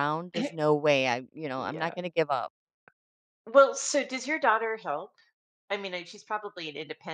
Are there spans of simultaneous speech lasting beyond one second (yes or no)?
no